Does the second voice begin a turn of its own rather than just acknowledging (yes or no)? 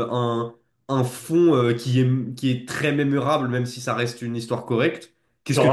no